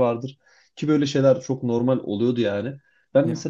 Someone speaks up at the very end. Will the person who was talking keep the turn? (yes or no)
yes